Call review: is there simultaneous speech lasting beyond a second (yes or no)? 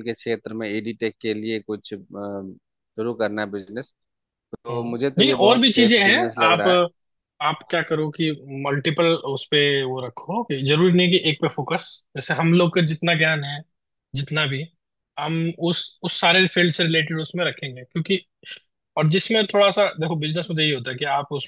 yes